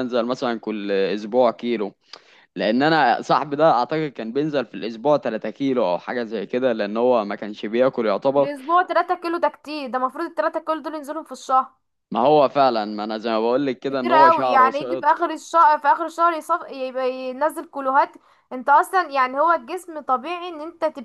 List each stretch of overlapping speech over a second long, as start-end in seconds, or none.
13.9-15.3